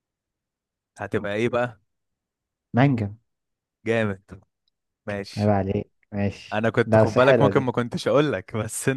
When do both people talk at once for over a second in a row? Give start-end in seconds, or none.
6.5-7.7